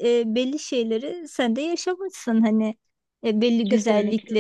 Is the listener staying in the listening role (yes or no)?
yes